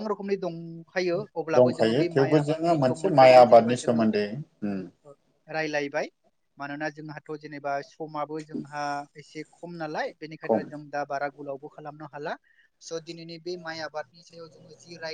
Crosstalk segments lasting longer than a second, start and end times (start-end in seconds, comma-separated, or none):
1.6-4.0